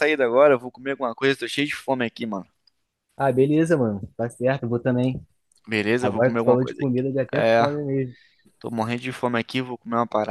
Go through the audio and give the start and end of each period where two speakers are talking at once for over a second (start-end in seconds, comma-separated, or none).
6.0-7.6